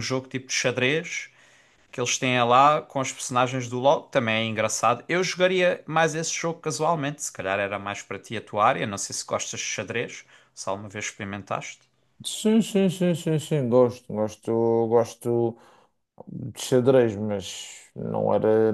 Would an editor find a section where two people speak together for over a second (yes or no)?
no